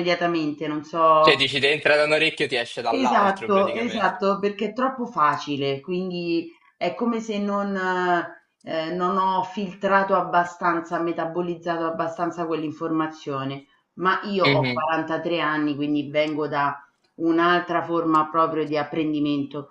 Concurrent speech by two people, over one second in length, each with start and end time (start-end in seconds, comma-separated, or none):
2.9-4.1